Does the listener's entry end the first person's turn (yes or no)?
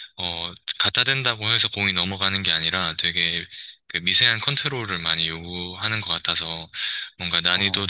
no